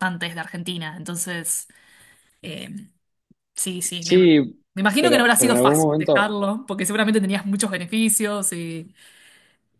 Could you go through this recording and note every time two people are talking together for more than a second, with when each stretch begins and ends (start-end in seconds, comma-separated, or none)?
5.0-6.3